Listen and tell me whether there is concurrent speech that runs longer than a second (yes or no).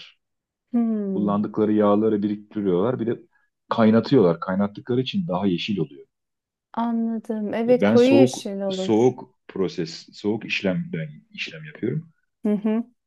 yes